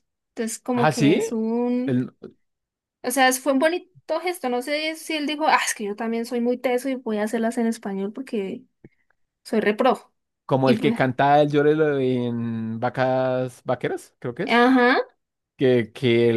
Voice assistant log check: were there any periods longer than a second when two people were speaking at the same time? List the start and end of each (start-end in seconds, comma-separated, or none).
none